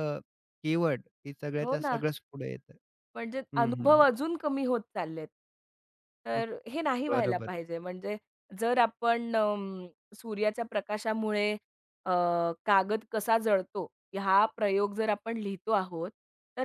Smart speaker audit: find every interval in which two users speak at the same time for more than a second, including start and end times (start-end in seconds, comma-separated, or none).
none